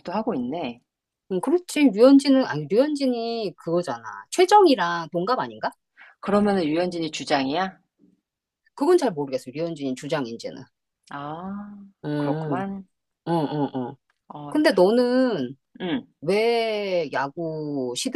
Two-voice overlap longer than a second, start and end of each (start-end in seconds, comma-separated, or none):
none